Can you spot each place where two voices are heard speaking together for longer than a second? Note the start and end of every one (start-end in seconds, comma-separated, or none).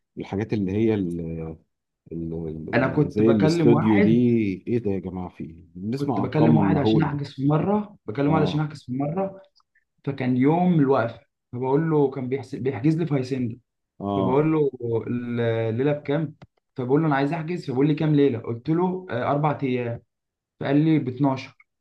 2.8-4.1, 5.9-7.2